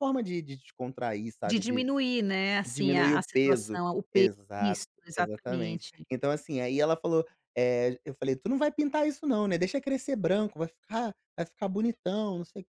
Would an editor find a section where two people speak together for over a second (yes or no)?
yes